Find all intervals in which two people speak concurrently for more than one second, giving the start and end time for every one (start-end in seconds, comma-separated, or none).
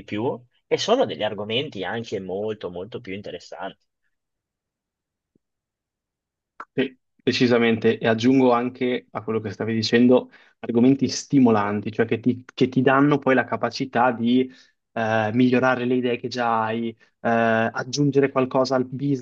none